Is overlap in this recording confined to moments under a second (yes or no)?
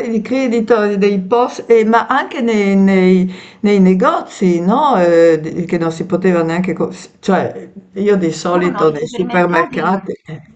no